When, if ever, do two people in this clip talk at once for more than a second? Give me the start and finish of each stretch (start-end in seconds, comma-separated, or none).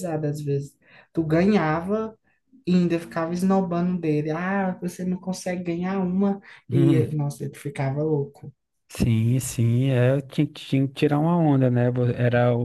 none